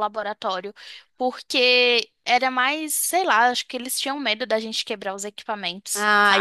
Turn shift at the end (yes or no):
yes